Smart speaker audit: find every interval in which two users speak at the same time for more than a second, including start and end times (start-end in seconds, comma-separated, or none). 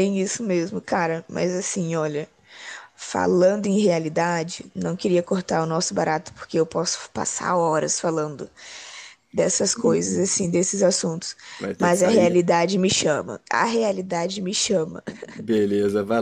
none